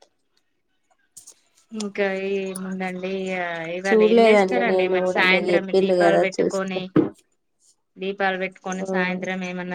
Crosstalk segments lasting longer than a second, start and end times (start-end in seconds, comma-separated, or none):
3.9-6.8